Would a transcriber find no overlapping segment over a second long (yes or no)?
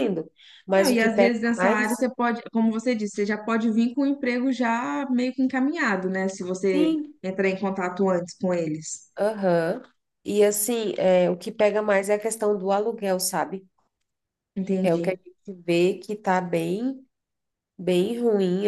no